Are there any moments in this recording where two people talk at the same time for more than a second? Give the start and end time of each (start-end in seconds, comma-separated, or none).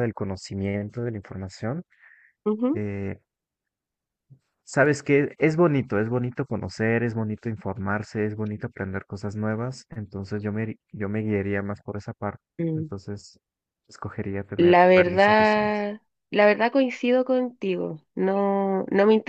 14.6-15.9